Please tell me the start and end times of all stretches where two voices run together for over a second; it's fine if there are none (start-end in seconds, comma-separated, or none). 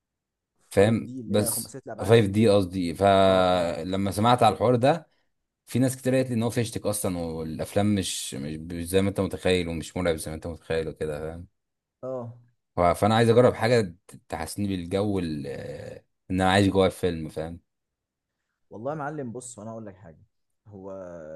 0.7-2.2